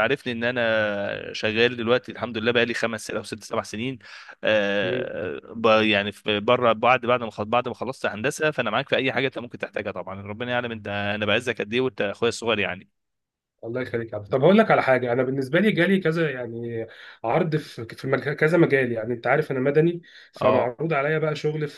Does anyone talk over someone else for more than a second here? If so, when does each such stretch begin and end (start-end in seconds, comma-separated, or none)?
none